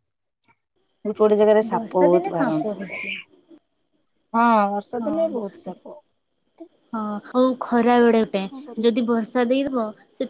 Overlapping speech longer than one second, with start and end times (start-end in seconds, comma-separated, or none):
1.7-3.0